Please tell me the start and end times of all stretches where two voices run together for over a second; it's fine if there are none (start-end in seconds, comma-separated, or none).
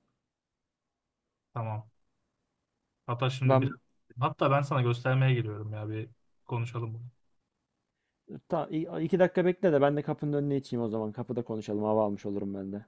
none